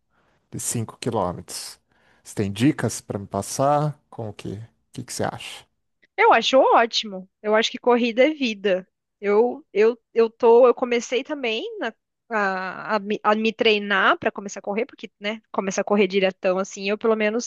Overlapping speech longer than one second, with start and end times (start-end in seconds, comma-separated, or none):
none